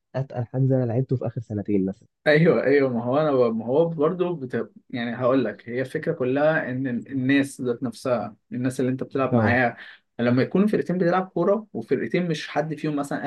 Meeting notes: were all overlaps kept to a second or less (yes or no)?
yes